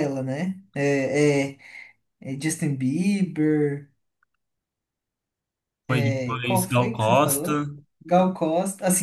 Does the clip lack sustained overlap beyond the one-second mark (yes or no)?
no